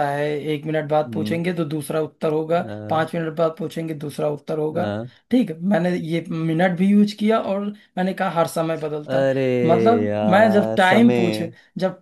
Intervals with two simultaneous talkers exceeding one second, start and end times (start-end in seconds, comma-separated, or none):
10.1-11.4